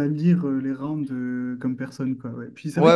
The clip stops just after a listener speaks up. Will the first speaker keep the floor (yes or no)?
yes